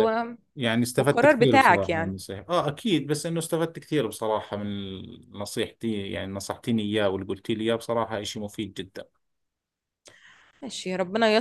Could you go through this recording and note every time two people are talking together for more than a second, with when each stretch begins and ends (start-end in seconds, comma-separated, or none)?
1.0-2.2